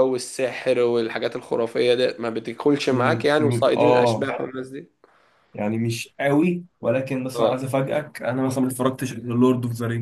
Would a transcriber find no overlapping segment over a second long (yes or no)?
no